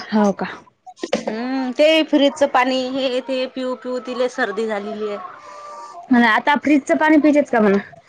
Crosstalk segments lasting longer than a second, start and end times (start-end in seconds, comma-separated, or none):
none